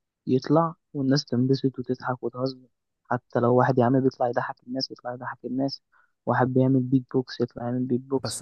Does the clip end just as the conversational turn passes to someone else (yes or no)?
yes